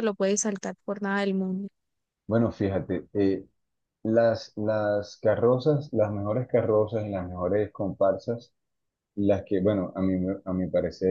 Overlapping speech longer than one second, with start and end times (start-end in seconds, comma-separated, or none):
none